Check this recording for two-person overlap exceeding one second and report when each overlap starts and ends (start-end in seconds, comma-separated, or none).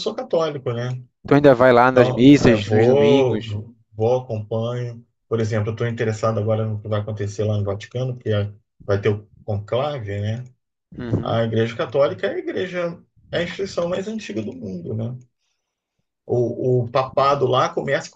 1.9-3.5